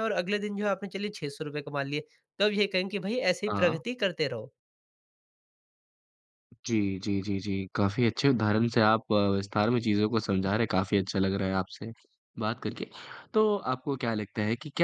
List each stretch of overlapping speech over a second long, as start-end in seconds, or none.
none